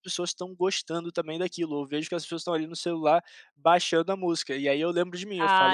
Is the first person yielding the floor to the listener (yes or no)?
no